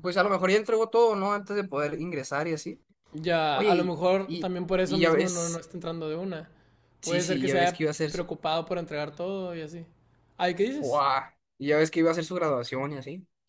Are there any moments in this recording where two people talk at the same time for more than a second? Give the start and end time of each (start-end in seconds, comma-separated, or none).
3.5-5.6, 7.0-8.3